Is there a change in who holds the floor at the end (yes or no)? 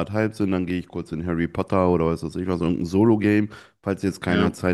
no